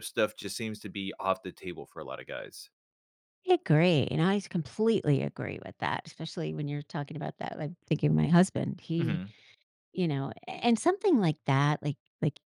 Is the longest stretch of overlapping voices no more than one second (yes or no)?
yes